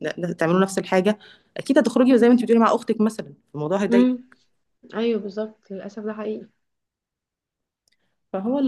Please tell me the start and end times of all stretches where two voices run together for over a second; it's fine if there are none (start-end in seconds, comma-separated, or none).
none